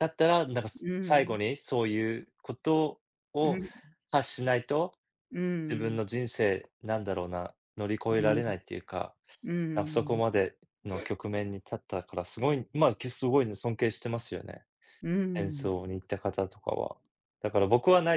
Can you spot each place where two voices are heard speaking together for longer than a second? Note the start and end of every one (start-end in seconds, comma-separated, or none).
none